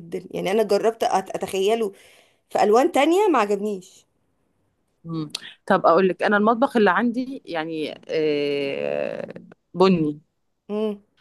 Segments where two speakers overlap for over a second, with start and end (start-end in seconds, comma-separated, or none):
none